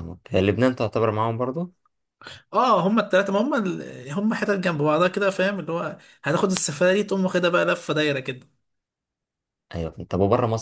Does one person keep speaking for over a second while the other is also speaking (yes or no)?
no